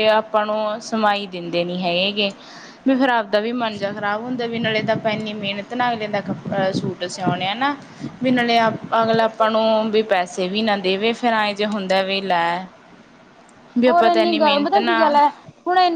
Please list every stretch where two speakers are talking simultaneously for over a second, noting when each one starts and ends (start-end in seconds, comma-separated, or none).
13.9-15.2